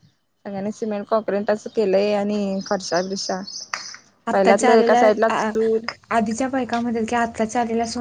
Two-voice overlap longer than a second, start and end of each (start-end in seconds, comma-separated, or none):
none